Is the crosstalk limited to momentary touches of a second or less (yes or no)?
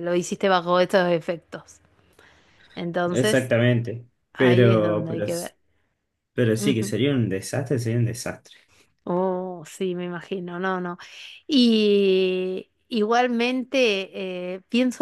no